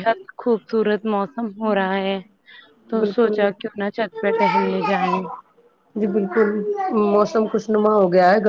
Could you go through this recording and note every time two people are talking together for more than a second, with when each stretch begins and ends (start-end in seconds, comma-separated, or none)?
none